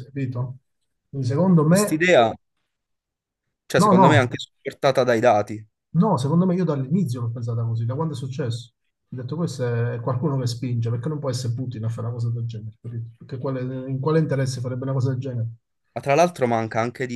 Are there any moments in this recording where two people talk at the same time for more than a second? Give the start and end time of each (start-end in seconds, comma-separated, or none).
none